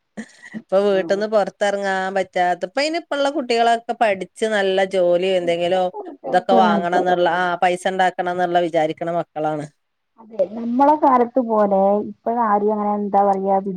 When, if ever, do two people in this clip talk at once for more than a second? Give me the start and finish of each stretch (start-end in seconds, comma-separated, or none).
none